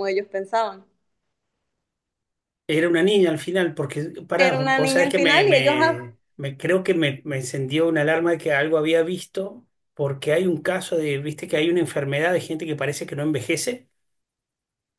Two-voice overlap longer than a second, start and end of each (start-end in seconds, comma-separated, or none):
4.4-6.1